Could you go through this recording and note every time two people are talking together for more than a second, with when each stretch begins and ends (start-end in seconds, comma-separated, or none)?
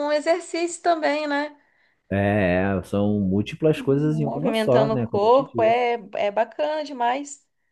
4.1-5.8